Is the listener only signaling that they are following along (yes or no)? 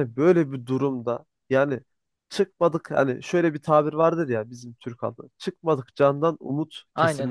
yes